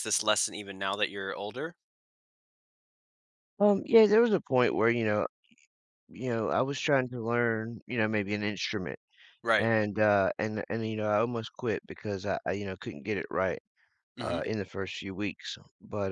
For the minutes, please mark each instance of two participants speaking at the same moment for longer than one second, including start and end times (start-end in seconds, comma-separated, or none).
none